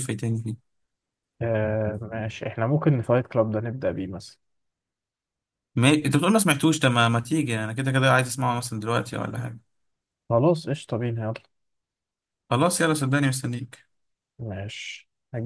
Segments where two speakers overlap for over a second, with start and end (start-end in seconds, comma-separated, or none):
none